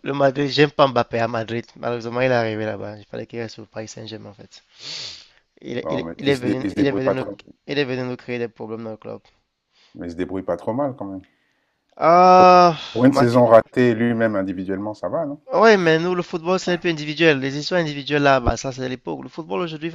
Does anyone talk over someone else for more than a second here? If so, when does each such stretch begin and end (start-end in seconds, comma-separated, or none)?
5.8-7.3